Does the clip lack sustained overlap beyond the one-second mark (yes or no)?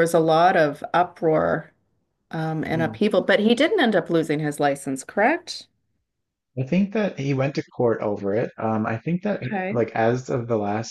yes